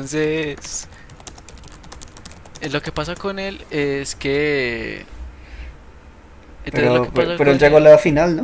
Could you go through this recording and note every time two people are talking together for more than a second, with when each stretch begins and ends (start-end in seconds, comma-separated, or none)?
6.7-7.9